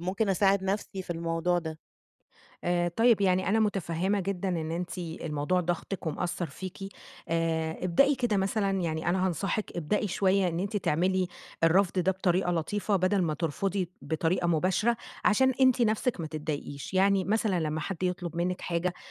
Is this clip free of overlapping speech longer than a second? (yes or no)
yes